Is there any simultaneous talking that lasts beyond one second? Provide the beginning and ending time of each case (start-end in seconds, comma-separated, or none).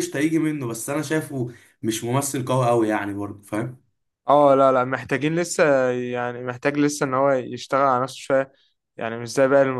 none